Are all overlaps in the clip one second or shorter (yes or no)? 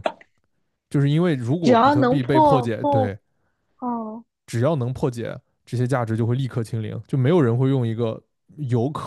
no